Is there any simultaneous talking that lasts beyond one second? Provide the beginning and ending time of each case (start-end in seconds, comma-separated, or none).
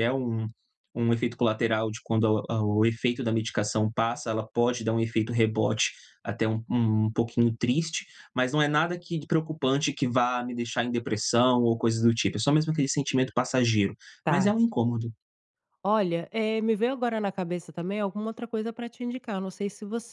none